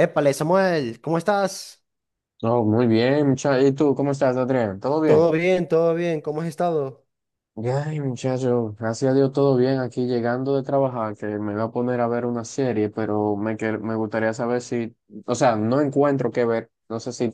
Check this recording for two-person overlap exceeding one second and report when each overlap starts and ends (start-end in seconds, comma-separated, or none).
none